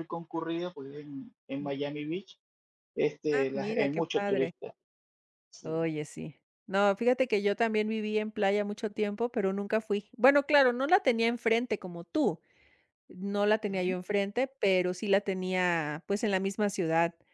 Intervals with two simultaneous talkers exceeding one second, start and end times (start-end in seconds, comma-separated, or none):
3.3-4.5